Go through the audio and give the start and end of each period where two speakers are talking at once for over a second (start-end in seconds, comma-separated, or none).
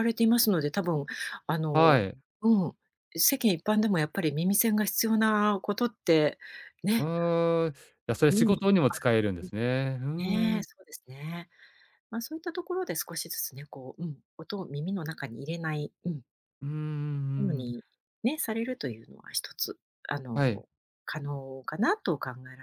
none